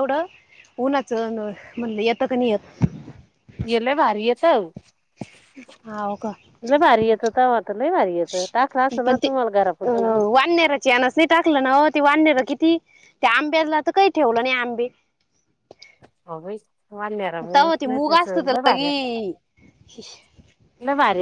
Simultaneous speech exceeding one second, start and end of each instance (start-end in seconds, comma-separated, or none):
17.5-19.1